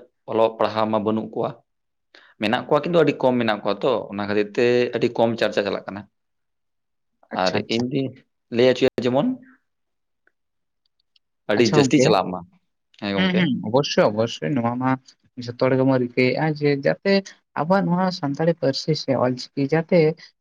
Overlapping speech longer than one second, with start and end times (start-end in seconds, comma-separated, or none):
none